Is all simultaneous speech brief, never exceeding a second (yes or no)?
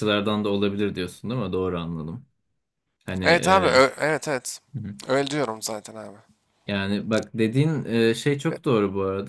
yes